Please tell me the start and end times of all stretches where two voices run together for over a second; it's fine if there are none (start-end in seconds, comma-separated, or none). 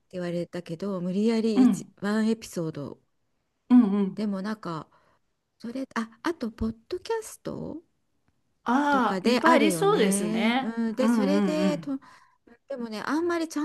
8.9-11.9